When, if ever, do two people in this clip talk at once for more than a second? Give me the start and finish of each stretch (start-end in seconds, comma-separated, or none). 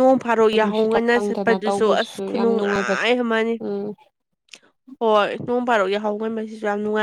0.6-2.9